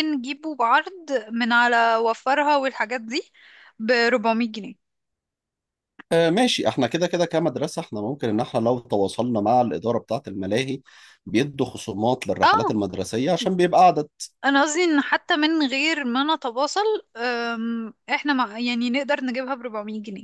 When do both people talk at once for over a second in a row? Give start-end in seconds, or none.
none